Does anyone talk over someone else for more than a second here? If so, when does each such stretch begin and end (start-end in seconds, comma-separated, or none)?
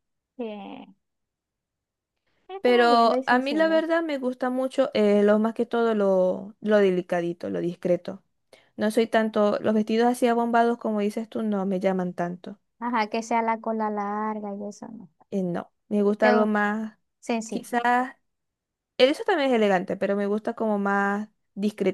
2.6-3.8